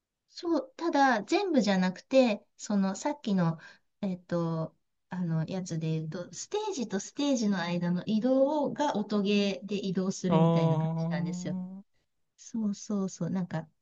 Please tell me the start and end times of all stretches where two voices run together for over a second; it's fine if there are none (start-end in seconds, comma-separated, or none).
10.3-11.6